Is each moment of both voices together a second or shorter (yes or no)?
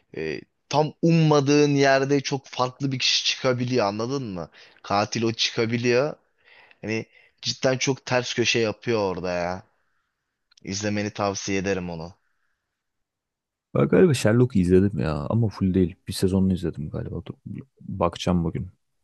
yes